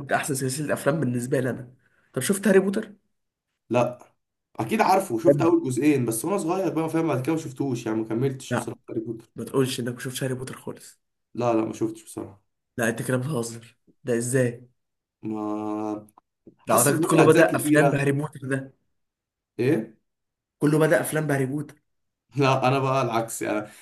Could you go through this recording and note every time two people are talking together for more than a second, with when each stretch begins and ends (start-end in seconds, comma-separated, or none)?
16.7-18.1